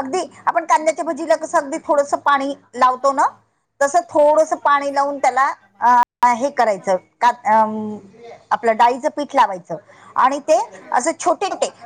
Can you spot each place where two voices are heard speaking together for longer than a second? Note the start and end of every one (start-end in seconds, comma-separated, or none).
3.9-6.0